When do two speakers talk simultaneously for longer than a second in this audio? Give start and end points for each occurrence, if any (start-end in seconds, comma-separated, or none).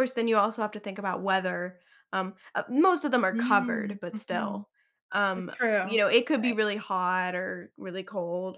3.3-4.6